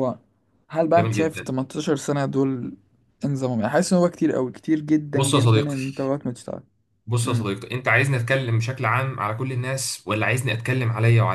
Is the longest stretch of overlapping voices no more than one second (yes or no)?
yes